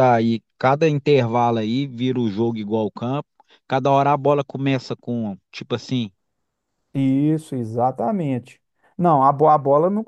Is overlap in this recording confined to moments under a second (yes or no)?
yes